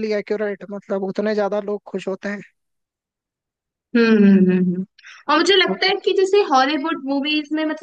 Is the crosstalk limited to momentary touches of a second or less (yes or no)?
yes